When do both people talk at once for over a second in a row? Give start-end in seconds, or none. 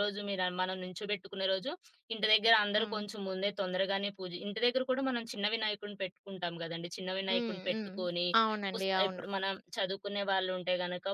none